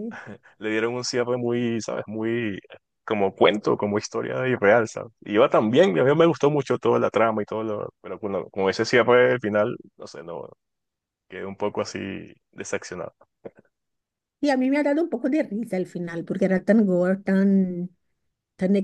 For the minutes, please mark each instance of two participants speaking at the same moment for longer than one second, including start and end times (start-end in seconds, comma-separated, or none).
none